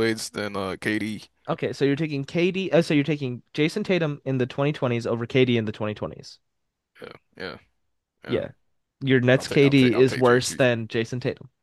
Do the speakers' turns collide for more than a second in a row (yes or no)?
yes